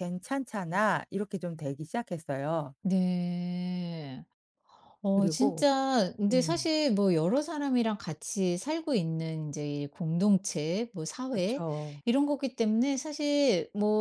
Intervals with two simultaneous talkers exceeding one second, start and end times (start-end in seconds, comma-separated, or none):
none